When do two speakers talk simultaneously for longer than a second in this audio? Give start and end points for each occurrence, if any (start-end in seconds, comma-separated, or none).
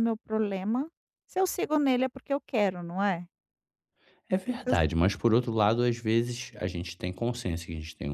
none